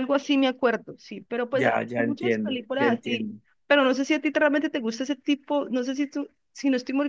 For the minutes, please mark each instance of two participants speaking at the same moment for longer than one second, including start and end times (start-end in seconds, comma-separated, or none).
1.5-3.4